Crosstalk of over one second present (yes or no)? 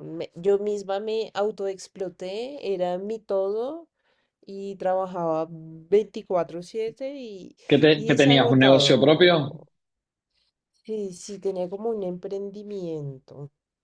yes